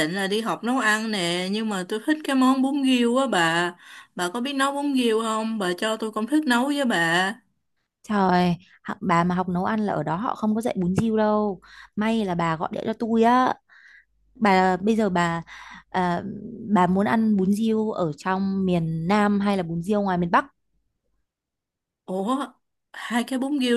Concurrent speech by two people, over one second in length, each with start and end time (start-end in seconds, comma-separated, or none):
none